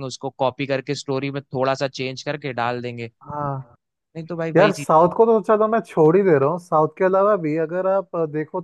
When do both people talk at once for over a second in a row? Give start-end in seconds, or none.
none